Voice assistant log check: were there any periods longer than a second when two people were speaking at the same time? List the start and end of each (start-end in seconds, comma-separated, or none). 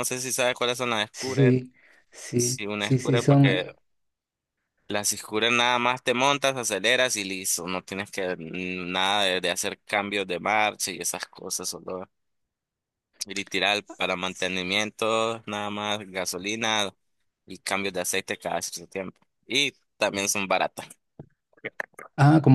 2.4-3.7